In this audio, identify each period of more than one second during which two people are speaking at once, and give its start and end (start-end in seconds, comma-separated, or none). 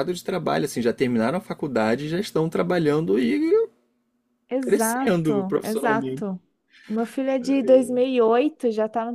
4.6-6.3